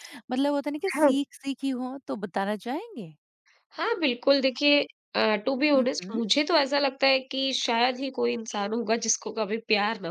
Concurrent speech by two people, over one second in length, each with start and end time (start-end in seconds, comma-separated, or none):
none